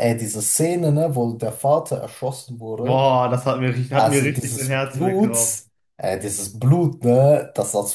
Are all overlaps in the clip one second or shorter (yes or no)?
no